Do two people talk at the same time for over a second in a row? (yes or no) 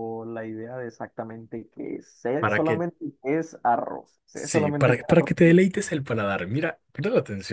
yes